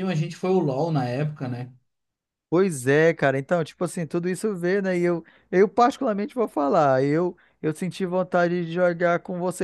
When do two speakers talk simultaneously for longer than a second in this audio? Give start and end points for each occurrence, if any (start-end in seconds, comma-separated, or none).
none